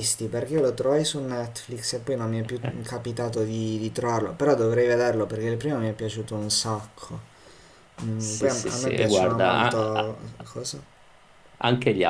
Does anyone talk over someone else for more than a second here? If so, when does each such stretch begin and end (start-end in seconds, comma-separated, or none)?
8.2-10.2